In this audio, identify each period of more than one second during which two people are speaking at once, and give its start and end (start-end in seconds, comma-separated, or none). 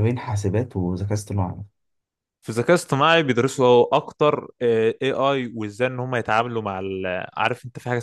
none